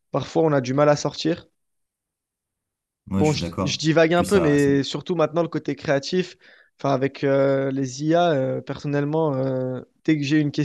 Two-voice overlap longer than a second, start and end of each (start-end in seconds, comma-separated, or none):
3.2-4.7